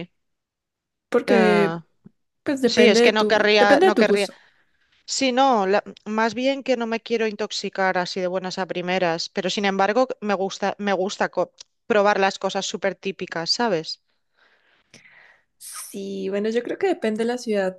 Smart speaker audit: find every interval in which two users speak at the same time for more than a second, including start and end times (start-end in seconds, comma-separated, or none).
2.6-4.3